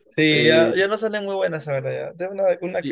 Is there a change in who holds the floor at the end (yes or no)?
yes